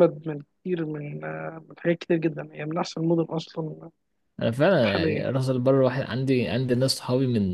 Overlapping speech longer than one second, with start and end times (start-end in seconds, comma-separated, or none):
none